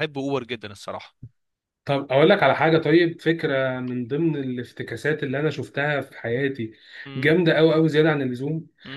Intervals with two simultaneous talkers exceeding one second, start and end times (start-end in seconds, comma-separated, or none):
none